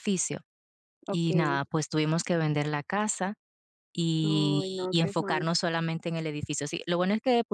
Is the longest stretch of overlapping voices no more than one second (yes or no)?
no